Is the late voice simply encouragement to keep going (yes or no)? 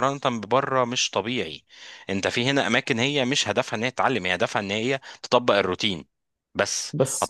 yes